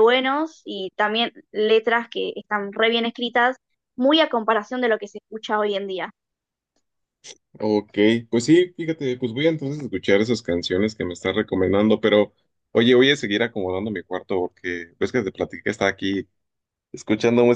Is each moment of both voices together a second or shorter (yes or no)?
yes